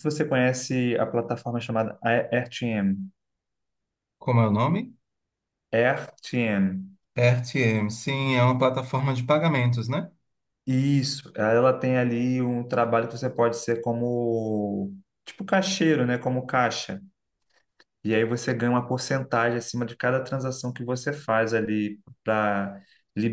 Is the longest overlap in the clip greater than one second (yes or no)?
no